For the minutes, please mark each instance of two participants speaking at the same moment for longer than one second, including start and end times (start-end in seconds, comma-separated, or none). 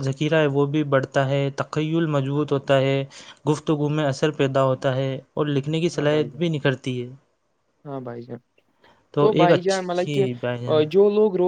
9.4-10.8